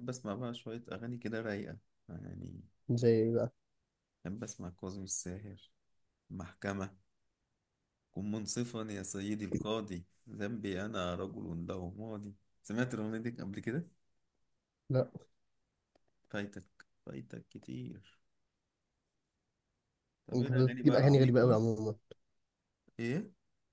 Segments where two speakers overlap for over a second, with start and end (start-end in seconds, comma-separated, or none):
20.3-21.6